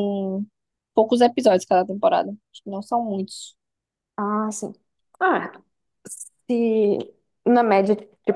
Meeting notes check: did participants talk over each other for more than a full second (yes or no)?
no